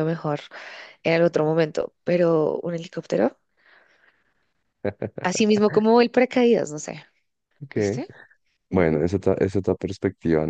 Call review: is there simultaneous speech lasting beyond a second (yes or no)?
no